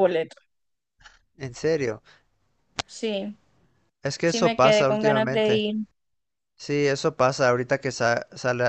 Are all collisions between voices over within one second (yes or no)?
no